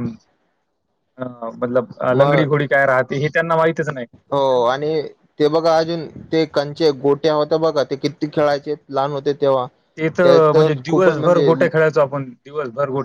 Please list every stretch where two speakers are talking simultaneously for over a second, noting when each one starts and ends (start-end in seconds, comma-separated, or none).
10.2-11.5